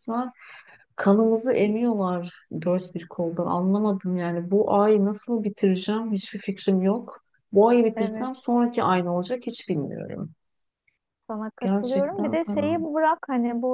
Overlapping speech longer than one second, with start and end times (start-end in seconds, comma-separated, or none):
11.6-12.9